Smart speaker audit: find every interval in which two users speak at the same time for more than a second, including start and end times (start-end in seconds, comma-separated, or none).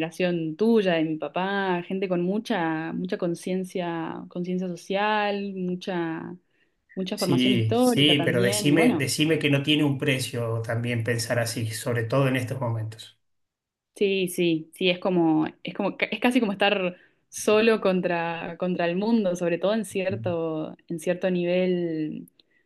7.1-9.1